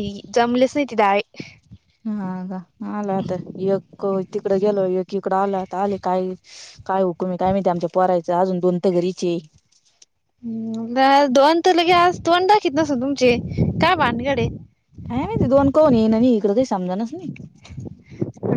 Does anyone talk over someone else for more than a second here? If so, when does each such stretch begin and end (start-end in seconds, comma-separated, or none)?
none